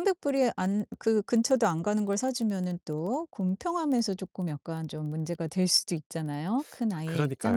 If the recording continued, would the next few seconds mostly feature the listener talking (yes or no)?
yes